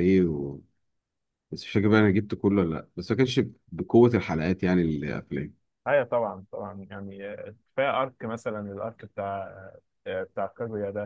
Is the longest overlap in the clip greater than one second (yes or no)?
no